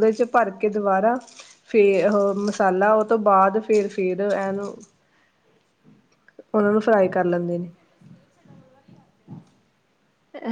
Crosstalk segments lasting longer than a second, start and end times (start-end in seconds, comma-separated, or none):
none